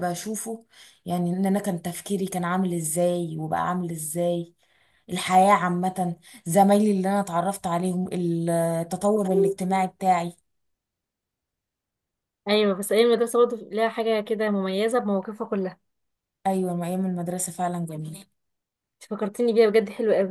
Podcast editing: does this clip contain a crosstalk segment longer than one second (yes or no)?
no